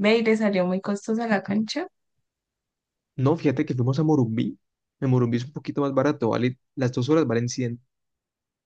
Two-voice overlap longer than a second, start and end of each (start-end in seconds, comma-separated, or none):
none